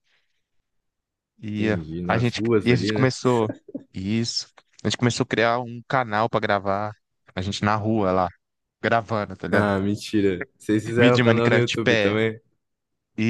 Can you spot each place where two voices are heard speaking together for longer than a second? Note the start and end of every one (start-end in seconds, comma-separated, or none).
1.6-3.1, 11.0-12.2